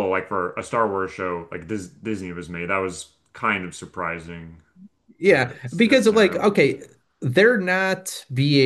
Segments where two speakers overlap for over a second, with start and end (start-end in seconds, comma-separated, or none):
5.2-6.5